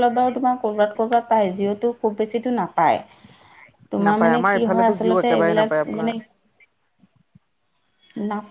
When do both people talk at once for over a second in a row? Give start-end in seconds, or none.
4.1-6.1